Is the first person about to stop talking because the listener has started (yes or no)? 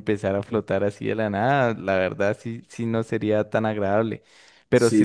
no